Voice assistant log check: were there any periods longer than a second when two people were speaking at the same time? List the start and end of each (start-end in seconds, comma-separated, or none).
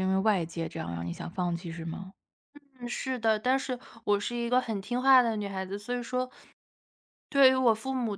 none